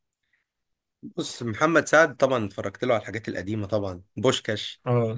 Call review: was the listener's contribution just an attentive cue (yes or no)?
yes